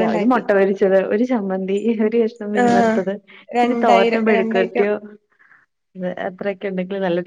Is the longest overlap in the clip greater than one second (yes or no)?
yes